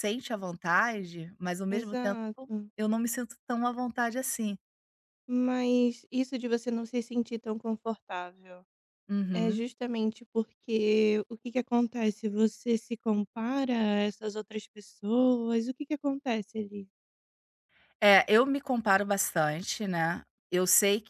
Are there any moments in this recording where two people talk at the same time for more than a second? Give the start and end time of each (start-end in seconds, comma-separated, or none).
none